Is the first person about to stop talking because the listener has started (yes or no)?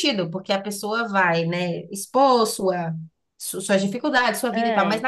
no